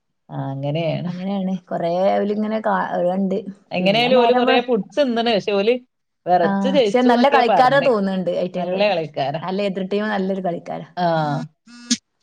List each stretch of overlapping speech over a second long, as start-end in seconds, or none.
none